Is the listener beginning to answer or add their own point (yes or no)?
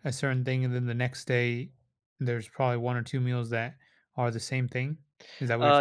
yes